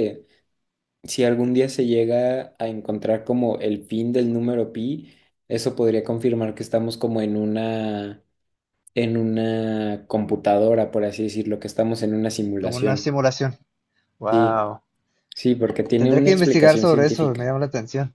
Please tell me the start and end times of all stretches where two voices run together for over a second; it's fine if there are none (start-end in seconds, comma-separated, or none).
16.0-17.5